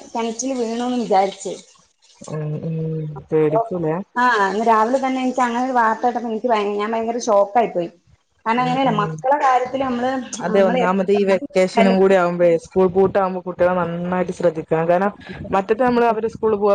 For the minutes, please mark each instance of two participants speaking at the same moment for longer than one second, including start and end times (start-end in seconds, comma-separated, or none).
10.5-11.9